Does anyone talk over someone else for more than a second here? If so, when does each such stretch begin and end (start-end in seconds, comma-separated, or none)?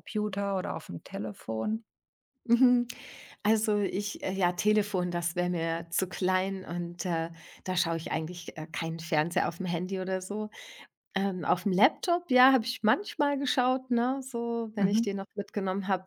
none